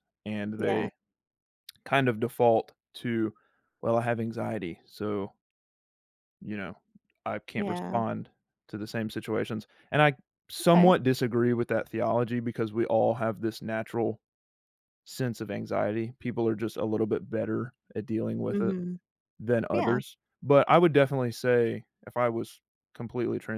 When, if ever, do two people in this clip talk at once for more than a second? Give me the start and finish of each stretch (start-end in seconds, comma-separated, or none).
none